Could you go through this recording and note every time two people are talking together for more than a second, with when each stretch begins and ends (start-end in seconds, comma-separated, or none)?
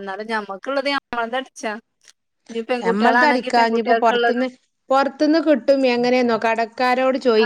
2.9-4.5